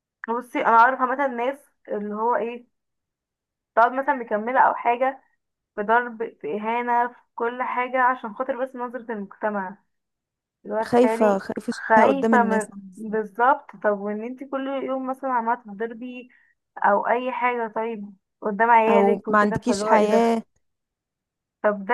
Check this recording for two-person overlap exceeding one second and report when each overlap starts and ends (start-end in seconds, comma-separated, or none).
10.8-13.2, 18.9-20.4